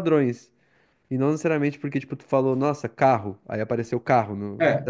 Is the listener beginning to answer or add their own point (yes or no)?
yes